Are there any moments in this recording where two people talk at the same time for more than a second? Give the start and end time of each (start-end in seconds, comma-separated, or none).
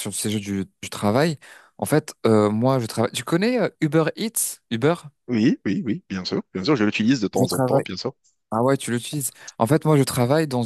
none